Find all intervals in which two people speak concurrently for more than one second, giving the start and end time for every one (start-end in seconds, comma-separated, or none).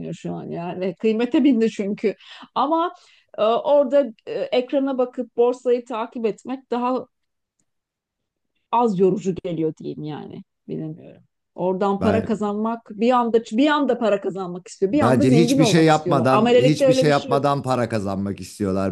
14.9-17.4